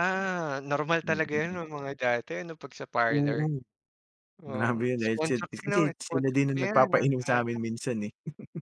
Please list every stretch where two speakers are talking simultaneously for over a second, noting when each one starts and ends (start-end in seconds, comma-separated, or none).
4.5-7.6